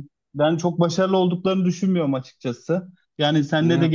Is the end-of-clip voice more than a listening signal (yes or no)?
no